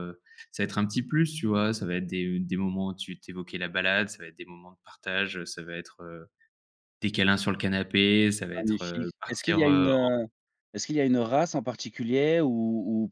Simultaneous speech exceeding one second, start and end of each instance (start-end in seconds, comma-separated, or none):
8.5-9.9